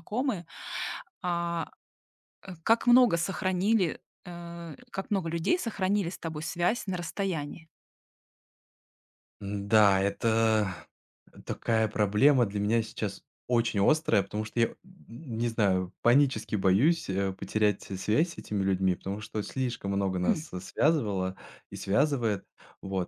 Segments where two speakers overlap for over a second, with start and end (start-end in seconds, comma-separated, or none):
none